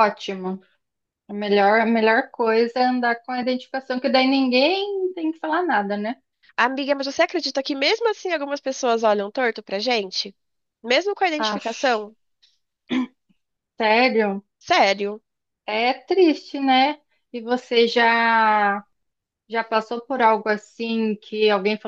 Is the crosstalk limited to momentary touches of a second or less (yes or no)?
yes